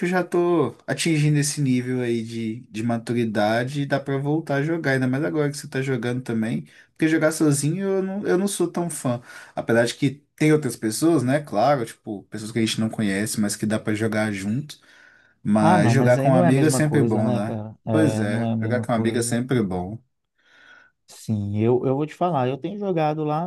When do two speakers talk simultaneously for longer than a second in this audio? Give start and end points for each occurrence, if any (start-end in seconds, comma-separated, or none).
15.6-19.4